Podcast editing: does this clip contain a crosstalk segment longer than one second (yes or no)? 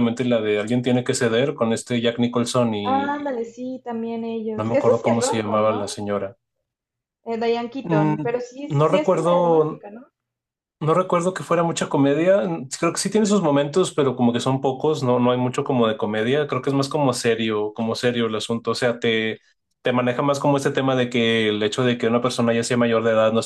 yes